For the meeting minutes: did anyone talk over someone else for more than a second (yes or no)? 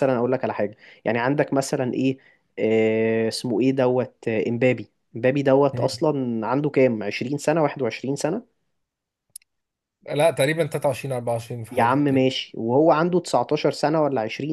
no